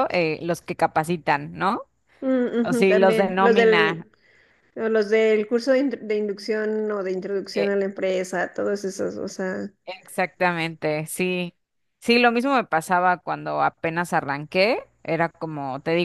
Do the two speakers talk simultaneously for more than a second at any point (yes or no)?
yes